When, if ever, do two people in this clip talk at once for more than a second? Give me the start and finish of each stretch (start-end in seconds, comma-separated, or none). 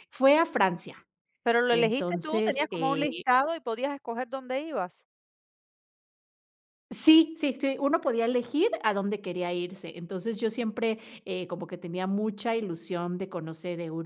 1.7-3.1